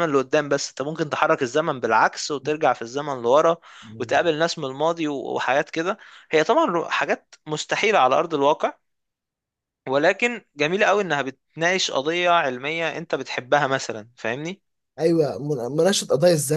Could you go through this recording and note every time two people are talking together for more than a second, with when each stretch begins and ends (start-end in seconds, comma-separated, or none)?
none